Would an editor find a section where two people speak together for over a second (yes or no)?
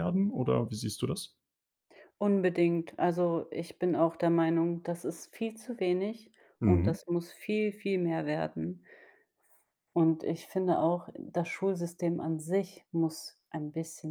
no